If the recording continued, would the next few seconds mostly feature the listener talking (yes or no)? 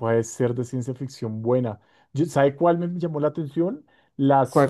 no